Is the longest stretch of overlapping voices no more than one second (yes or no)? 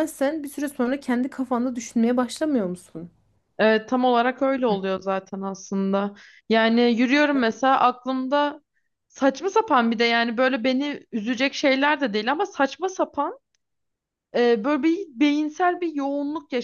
yes